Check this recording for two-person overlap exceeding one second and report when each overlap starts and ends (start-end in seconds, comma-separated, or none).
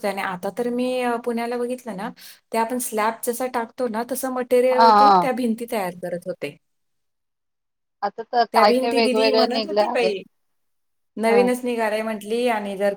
8.5-10.1